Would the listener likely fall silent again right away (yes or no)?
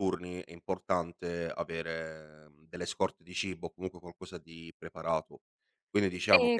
yes